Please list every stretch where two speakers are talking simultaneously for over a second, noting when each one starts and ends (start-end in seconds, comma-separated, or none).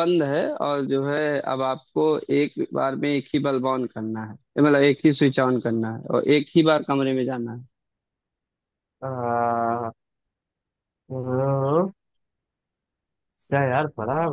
none